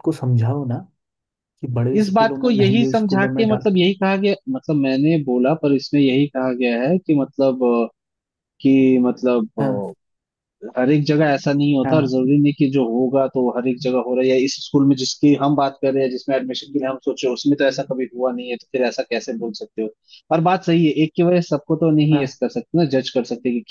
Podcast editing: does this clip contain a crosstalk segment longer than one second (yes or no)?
yes